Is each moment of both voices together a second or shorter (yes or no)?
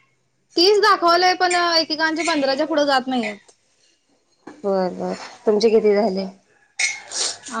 yes